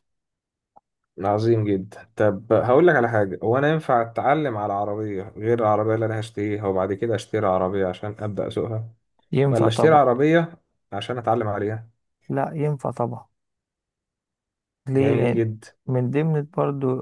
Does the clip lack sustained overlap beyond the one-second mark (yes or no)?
yes